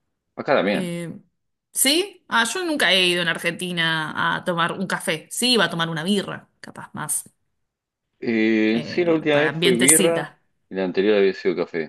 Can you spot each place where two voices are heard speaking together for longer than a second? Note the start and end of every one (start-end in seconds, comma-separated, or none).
8.7-10.4